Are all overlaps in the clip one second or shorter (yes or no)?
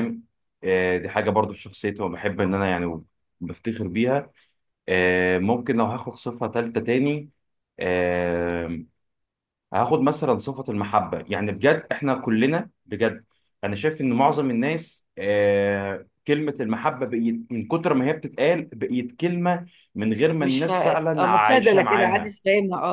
no